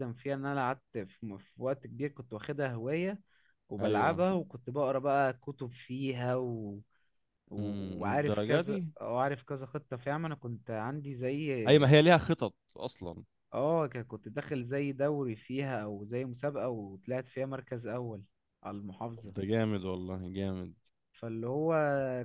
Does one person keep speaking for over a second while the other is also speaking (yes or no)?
yes